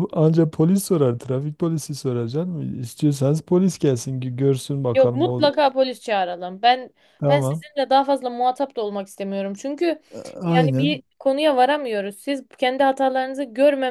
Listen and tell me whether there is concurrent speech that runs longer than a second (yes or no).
no